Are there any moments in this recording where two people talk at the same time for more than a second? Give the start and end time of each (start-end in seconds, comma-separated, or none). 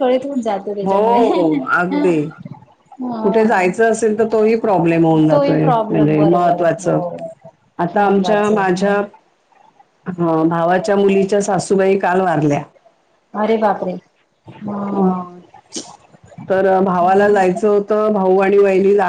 5.3-7.0